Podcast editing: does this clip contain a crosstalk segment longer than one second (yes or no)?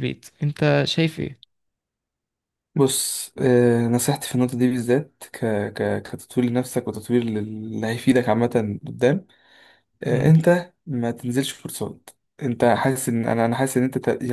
no